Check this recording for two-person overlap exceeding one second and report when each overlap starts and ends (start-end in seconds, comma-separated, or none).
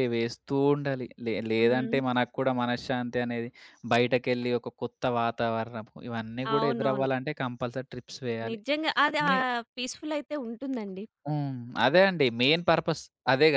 none